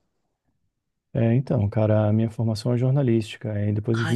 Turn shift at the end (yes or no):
no